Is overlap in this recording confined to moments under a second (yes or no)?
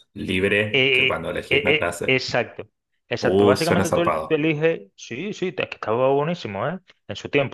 no